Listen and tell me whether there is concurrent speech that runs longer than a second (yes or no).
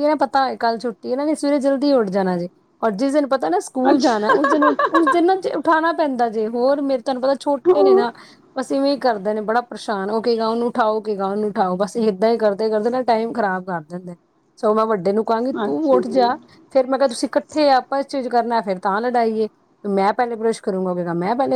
no